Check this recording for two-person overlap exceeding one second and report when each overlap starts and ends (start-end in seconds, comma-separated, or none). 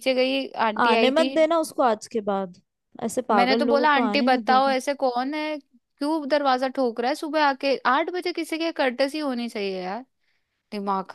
3.3-4.7